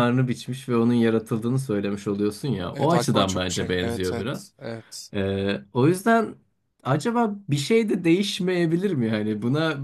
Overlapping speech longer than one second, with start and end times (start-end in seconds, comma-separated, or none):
2.7-4.5